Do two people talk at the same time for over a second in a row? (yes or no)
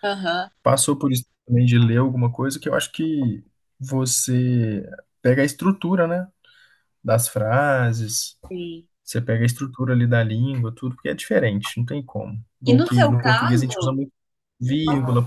yes